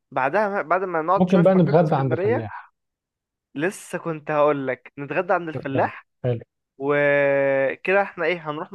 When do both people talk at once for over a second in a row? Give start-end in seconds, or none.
1.2-2.5